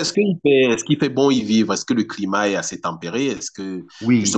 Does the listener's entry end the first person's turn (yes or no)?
yes